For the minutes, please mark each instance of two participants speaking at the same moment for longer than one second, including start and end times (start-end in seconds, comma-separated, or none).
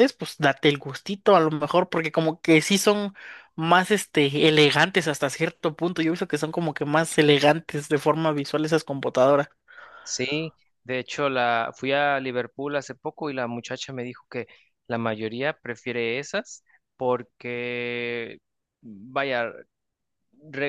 none